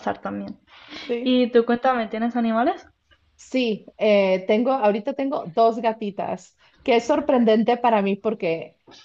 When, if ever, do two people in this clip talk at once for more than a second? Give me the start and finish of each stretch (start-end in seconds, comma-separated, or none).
none